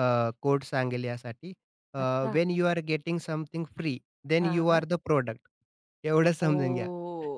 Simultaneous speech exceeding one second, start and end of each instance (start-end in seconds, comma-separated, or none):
none